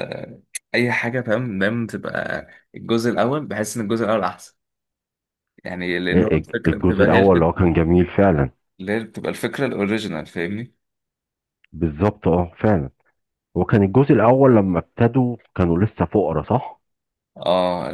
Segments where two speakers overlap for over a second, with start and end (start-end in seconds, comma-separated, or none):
6.1-7.5